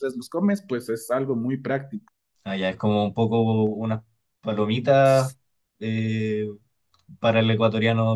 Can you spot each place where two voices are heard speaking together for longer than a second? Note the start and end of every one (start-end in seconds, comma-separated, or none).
none